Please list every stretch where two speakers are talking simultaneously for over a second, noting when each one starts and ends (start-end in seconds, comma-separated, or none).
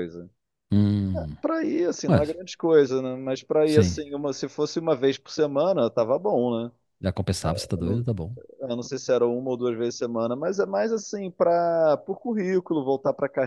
none